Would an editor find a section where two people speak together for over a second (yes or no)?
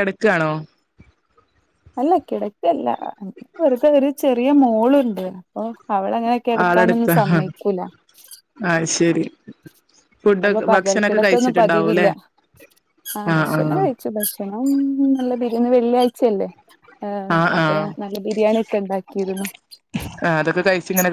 yes